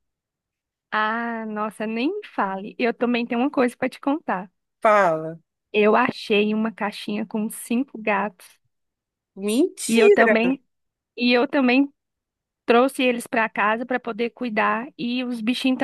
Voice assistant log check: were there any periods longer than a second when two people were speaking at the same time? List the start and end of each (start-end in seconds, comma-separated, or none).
none